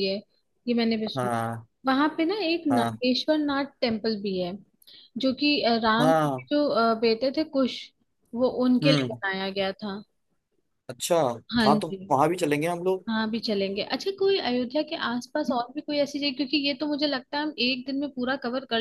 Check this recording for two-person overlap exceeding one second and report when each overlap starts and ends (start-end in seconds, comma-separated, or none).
none